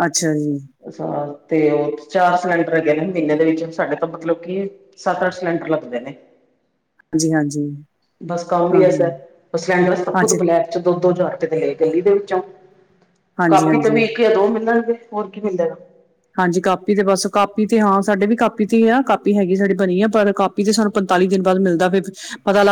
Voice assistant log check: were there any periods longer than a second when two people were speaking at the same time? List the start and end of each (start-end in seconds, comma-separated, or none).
none